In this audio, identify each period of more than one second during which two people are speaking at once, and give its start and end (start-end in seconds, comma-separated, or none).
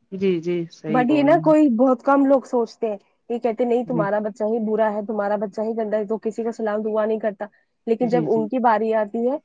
none